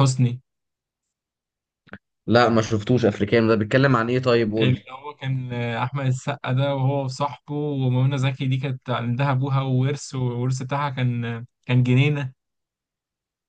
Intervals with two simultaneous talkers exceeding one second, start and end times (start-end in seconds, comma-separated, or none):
none